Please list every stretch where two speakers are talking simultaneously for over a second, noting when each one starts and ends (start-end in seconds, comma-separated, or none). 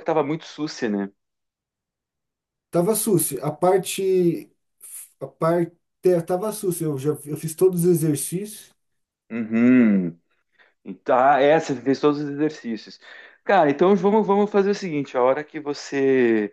none